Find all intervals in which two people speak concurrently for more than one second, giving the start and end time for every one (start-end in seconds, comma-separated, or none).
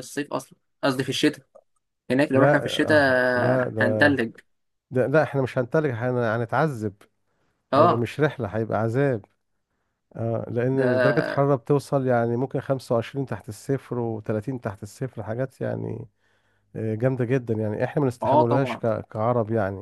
2.3-4.2